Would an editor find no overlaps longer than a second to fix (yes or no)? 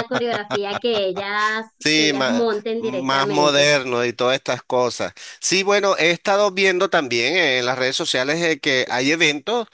no